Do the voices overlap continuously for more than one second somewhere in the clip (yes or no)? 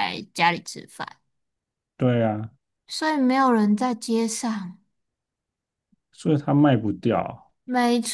no